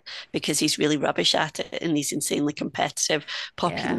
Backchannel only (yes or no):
yes